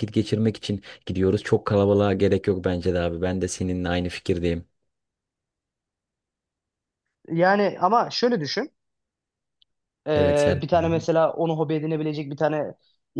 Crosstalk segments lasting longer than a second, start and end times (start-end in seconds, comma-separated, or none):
none